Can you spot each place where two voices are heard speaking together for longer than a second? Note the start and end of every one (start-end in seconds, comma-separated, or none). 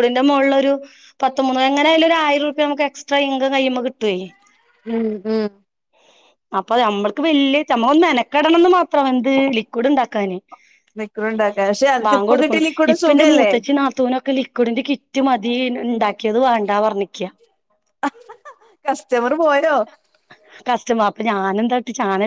none